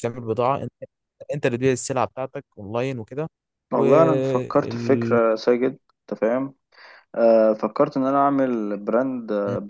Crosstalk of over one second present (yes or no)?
yes